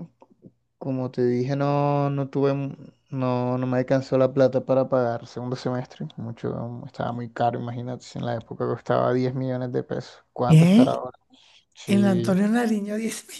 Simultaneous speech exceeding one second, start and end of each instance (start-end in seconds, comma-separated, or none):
none